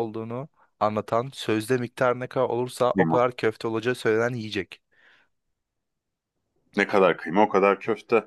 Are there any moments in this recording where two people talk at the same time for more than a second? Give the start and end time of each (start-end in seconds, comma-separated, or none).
none